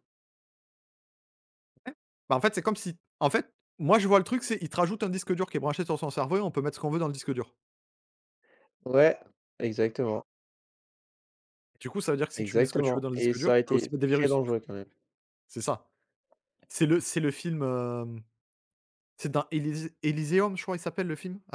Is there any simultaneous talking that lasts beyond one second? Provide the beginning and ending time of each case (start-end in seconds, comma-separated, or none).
12.4-14.4